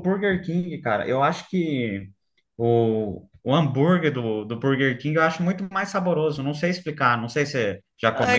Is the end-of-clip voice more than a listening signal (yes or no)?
yes